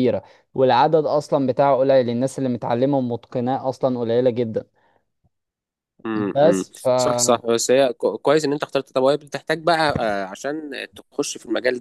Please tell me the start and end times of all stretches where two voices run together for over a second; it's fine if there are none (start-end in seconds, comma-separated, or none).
none